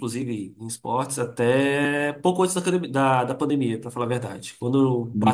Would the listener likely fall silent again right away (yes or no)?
no